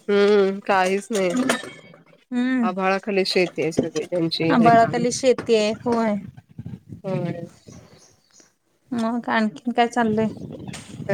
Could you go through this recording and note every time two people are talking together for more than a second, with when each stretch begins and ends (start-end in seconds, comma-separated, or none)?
none